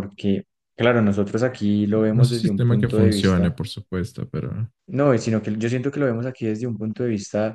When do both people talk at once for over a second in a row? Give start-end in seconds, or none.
1.9-3.6